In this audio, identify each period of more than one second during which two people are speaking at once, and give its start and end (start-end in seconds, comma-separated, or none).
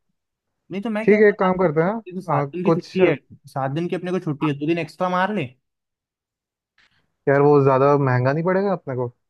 1.0-3.0